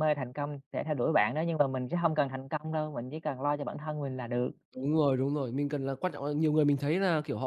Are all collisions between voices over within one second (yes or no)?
yes